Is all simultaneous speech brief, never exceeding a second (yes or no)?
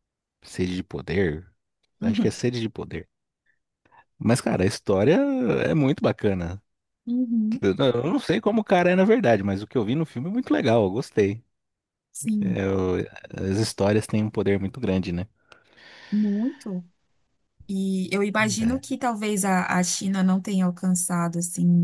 yes